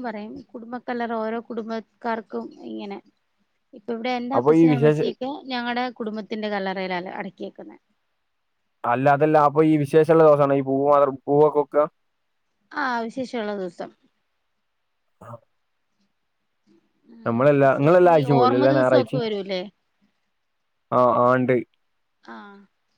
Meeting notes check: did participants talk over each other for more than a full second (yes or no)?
yes